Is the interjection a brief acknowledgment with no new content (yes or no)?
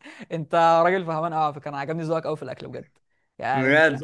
no